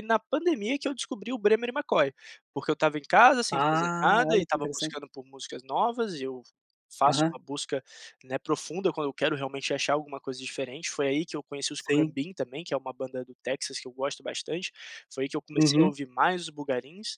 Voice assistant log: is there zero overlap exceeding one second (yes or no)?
no